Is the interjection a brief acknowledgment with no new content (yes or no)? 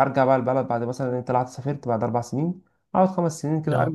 yes